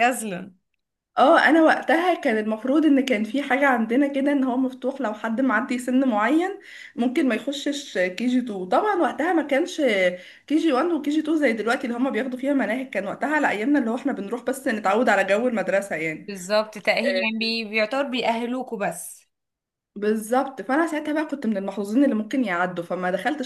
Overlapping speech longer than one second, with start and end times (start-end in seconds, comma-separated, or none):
none